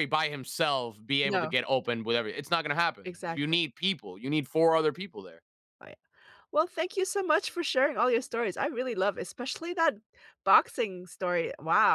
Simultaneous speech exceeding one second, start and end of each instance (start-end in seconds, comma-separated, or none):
none